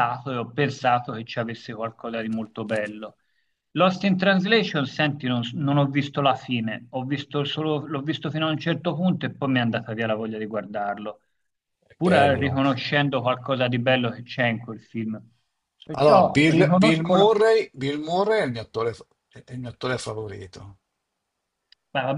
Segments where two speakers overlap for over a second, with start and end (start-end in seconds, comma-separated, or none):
15.9-17.3